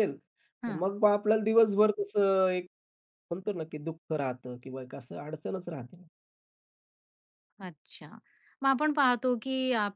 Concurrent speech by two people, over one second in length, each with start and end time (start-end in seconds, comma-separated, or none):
none